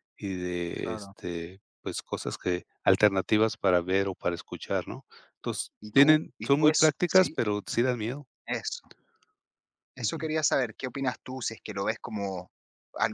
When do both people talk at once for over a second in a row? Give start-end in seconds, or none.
5.8-7.4